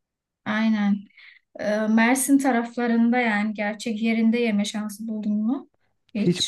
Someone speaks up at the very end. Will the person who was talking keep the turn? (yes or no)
no